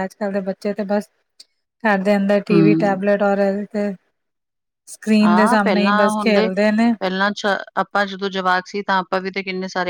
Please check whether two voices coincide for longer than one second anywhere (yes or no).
no